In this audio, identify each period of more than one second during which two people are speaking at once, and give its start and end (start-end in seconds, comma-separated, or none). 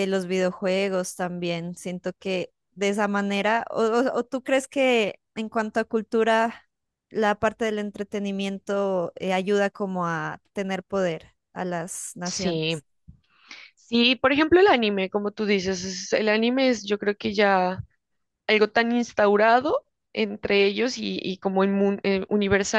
none